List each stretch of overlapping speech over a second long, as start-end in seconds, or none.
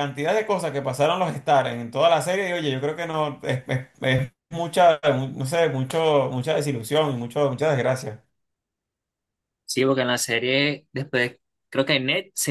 none